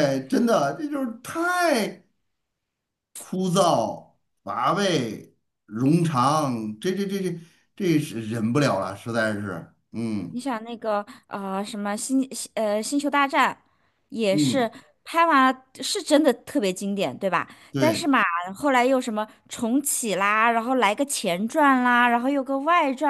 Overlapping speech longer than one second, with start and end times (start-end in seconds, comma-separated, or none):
none